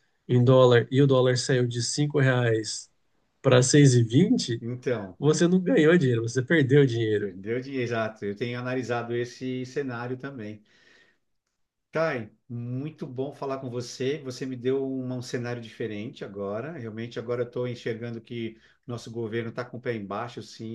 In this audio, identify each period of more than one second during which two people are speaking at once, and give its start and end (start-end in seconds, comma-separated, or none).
none